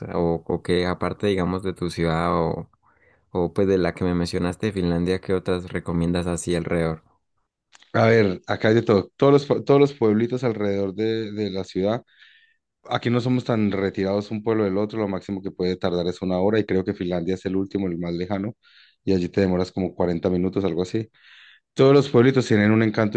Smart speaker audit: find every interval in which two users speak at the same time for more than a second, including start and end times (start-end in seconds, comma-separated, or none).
none